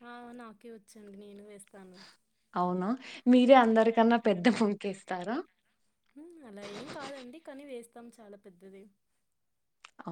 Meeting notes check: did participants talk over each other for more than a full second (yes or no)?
no